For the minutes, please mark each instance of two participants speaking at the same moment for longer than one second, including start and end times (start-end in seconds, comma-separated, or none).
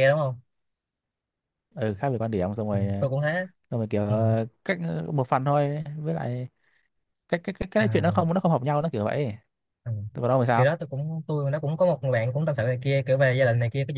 none